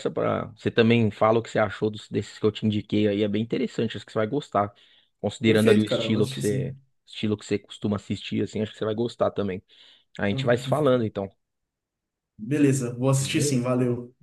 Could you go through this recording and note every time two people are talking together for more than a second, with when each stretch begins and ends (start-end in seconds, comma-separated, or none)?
5.4-6.7